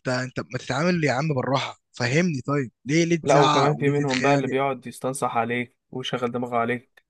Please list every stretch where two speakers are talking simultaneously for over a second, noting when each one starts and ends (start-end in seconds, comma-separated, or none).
3.2-4.5